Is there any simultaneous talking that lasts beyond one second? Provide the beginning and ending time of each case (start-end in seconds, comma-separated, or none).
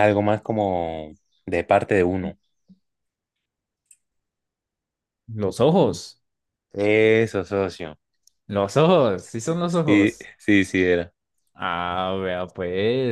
none